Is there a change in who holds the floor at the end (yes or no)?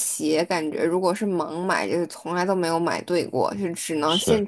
no